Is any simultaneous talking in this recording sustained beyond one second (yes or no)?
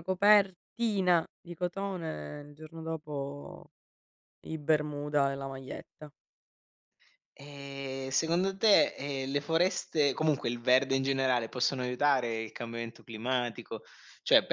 no